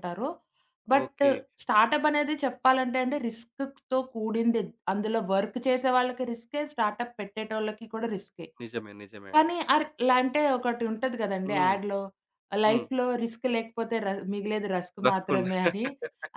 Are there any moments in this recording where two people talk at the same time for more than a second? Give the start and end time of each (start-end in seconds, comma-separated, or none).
none